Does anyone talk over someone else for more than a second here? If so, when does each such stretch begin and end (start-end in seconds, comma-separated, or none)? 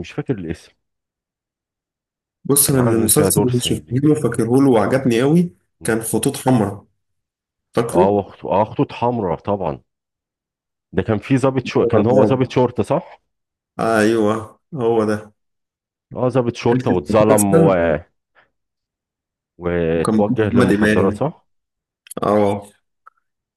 2.7-4.0, 20.0-21.2